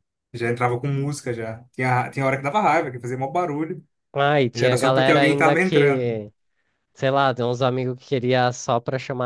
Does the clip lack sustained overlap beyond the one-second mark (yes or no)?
no